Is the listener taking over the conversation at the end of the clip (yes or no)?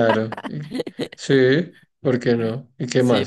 yes